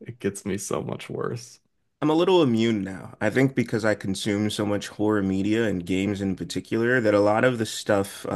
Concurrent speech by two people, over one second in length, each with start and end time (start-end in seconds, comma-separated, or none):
none